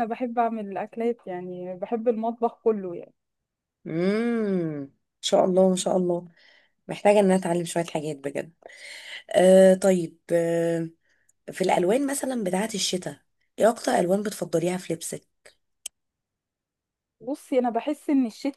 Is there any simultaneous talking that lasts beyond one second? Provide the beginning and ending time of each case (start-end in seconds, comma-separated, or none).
none